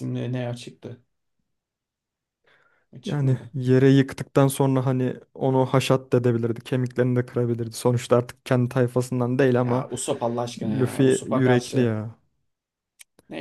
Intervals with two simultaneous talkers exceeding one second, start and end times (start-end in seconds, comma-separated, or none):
10.6-11.9